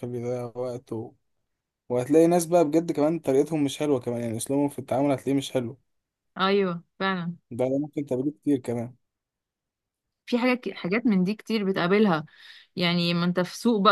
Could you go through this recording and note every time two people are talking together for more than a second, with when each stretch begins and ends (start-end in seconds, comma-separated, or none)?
none